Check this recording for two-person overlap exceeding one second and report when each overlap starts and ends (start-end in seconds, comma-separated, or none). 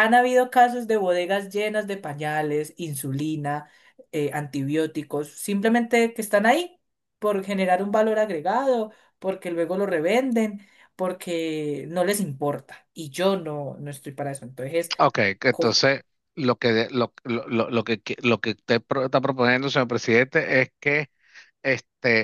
none